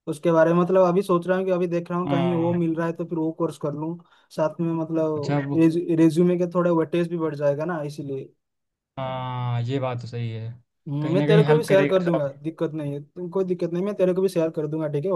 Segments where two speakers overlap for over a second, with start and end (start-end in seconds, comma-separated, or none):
11.0-12.2